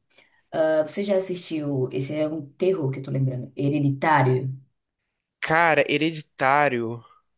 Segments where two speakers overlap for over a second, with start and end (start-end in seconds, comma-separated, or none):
none